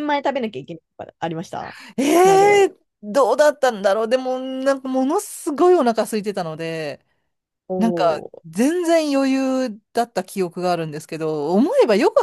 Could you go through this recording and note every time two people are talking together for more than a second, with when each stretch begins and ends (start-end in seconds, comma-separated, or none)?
none